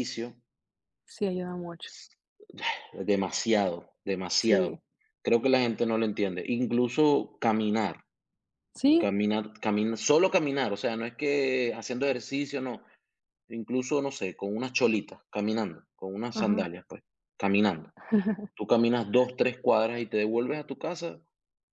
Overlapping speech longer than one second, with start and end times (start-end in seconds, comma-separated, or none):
none